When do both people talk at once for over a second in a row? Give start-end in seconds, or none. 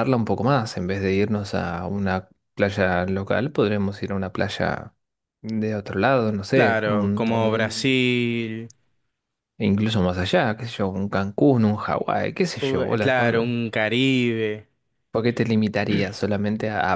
6.5-7.9